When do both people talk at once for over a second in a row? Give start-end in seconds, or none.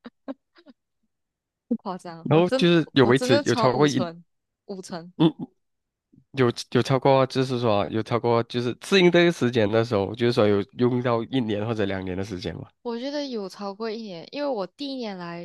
2.2-4.0